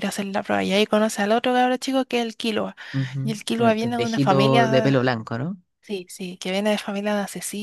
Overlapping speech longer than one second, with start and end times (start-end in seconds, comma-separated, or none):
3.2-5.0